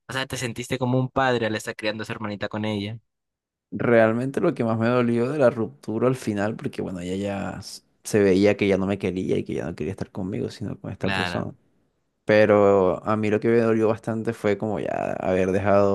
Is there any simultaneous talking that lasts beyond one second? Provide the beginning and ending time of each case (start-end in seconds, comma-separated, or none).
none